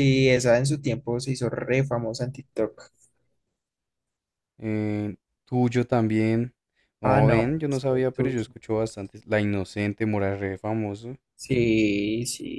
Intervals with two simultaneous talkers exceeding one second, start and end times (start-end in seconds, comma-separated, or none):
7.0-8.5